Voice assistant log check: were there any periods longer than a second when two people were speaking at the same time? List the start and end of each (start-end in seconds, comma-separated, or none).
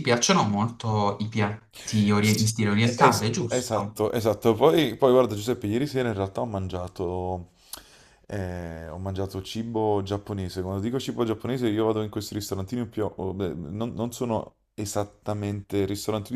2.2-4.0